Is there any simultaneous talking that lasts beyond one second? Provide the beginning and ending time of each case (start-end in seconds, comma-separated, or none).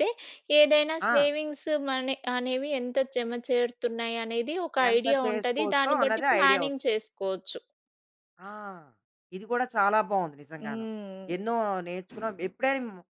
4.9-6.9